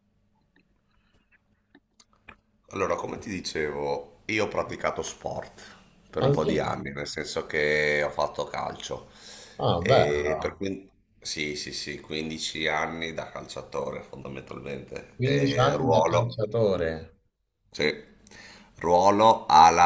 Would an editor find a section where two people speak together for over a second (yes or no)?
yes